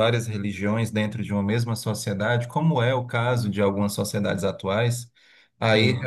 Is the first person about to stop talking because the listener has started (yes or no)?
no